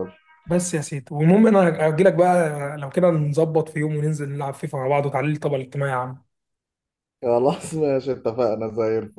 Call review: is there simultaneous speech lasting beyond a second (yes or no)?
no